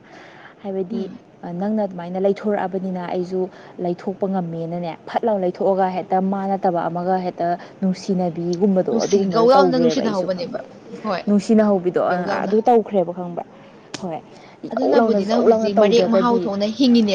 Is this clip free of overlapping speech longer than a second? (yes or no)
no